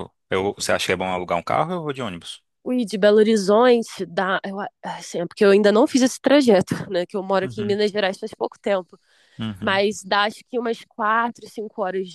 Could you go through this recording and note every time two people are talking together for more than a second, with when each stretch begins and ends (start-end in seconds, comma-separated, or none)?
none